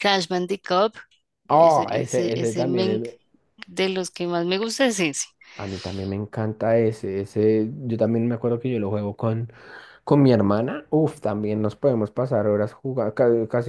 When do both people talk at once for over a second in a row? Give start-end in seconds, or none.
1.5-3.0